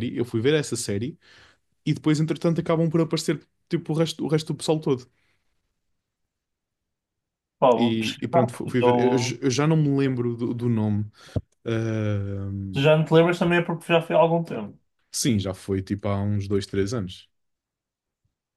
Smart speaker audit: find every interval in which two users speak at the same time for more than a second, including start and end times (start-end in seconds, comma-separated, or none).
7.8-9.4